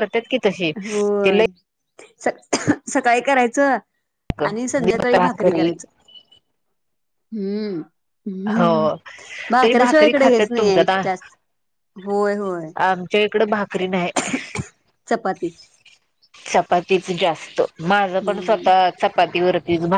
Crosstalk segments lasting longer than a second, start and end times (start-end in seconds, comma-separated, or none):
9.6-10.9